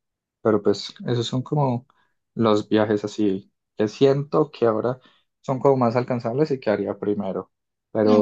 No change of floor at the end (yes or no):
yes